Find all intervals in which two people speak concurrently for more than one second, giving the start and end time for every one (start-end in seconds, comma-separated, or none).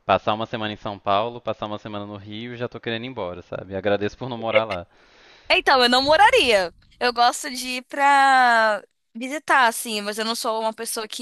none